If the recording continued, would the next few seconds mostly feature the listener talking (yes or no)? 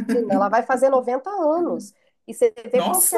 no